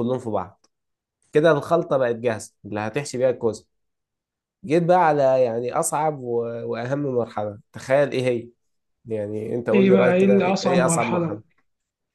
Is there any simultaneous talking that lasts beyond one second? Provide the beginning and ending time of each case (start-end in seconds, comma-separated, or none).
9.7-11.4